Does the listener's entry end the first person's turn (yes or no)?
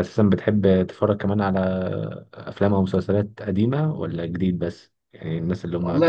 yes